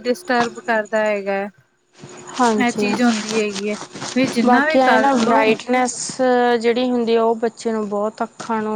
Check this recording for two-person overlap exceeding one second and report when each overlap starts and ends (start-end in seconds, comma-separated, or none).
none